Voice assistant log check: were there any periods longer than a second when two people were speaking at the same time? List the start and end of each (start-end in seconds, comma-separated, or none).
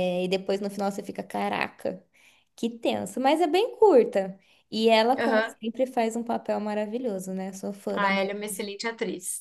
none